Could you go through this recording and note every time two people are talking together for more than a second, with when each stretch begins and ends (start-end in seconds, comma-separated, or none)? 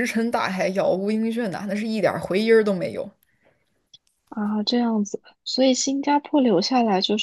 none